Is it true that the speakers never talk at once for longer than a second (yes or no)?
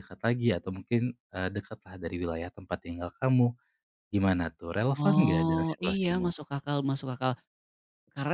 no